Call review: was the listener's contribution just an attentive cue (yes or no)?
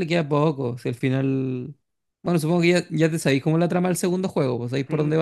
no